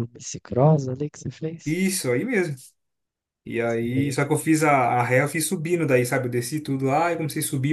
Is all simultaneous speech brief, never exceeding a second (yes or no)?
yes